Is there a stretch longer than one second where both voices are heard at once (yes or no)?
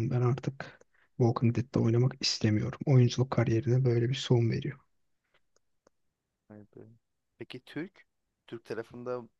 no